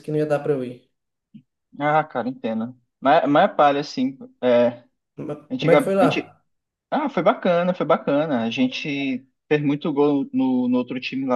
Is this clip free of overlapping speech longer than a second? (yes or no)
yes